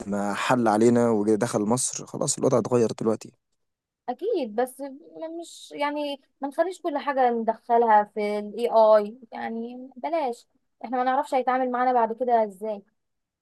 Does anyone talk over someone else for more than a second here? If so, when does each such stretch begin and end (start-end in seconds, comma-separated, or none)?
none